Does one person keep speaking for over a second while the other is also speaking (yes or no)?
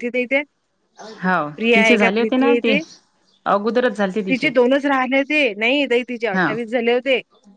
no